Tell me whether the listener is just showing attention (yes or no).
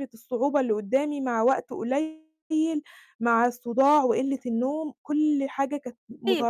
no